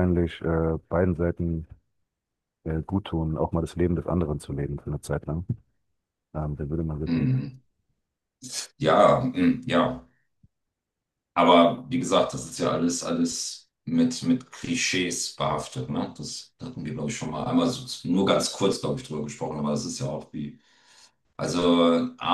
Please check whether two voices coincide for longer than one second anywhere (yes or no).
no